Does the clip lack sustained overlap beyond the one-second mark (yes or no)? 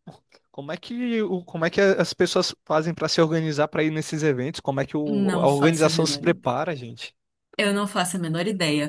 no